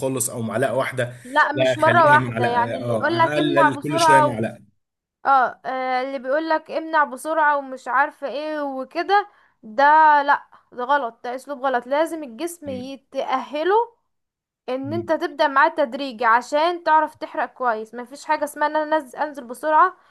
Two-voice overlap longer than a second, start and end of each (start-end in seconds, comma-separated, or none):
1.5-4.5